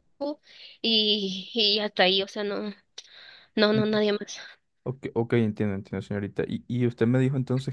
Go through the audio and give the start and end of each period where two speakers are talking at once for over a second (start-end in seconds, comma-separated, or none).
none